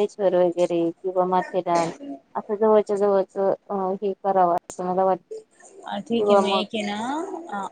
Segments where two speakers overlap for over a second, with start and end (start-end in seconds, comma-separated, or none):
none